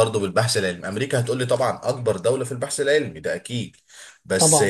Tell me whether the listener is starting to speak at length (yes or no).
no